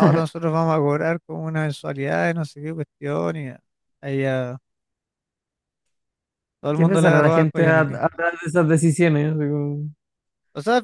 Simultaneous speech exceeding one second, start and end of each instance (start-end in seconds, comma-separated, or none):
6.7-8.0